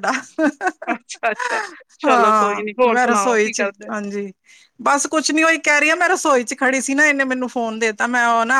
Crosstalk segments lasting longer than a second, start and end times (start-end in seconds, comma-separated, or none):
2.1-3.9